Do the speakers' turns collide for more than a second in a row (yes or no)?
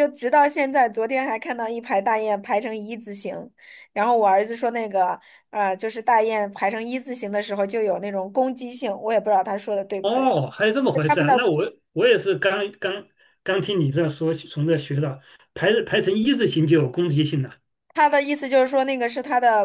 no